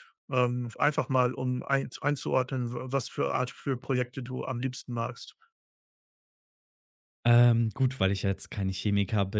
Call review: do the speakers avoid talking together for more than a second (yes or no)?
yes